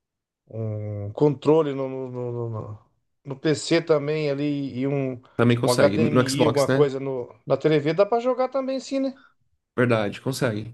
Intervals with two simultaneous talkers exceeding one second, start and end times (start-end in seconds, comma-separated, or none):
5.6-6.9